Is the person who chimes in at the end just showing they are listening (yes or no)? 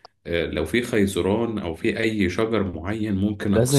no